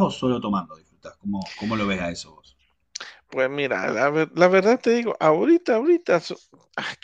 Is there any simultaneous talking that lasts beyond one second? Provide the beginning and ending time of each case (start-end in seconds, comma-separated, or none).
none